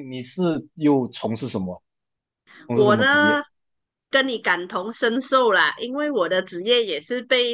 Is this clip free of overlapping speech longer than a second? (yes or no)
yes